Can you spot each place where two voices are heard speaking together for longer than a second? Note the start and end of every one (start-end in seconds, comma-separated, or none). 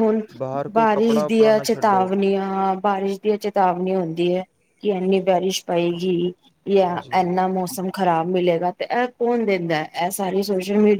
0.8-2.1